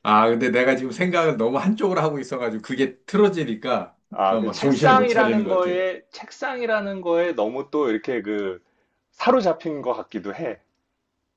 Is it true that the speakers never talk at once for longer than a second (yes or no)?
no